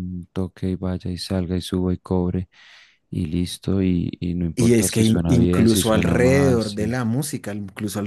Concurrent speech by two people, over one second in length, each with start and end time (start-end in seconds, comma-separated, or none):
4.6-7.0